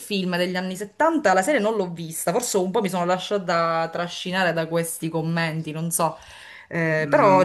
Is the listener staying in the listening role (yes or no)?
no